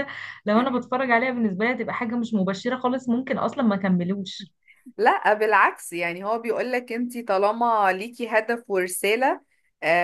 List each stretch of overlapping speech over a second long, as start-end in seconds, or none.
none